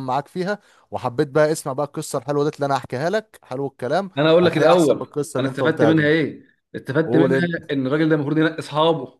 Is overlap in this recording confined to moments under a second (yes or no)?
no